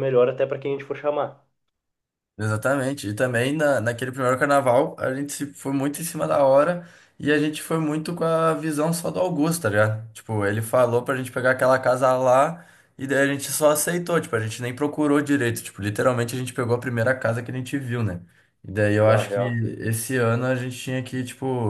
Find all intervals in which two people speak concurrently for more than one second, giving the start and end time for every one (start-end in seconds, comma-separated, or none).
none